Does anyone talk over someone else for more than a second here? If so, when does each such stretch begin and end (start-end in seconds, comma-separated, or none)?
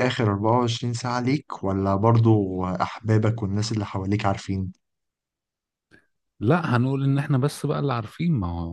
none